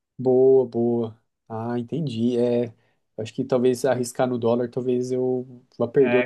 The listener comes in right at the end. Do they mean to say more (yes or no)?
yes